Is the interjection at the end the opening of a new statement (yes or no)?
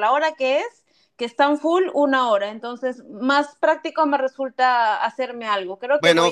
yes